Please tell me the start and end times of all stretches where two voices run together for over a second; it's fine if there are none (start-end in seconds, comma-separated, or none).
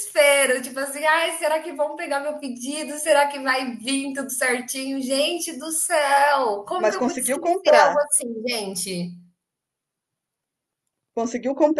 6.8-8.0